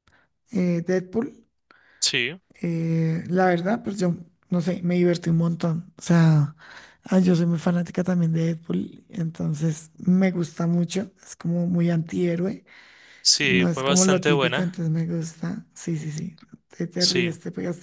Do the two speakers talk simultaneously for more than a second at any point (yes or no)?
yes